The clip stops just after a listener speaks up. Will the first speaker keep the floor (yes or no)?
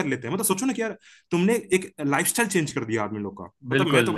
yes